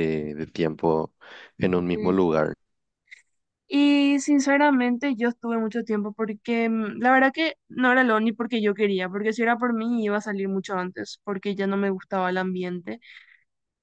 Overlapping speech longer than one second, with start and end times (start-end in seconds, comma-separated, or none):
none